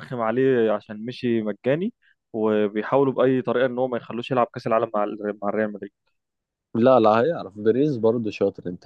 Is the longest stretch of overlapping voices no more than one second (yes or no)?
yes